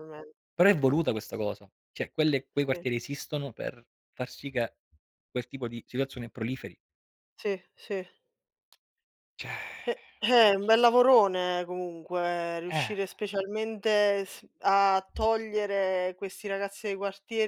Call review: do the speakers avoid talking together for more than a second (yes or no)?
yes